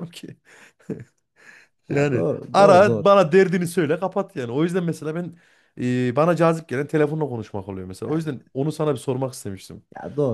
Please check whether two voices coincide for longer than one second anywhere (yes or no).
yes